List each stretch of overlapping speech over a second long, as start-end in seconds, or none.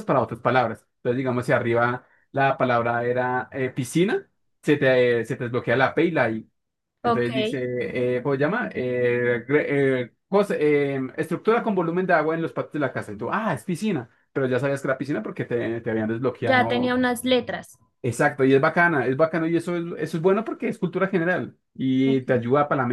none